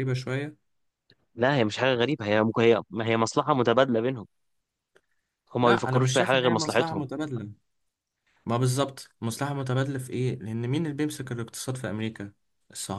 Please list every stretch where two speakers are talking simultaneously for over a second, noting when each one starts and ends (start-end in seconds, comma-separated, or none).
5.6-7.1